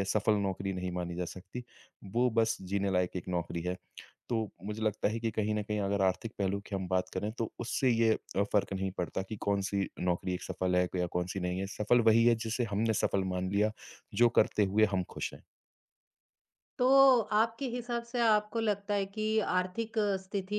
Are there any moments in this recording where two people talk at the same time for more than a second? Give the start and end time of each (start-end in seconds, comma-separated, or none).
none